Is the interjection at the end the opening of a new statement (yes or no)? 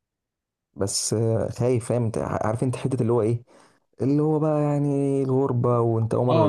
yes